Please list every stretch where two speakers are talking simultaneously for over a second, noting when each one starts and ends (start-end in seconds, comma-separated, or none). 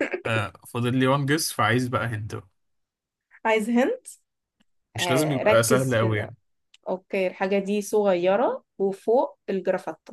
5.0-6.3